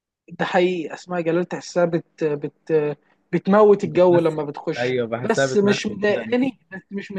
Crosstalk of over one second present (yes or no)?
yes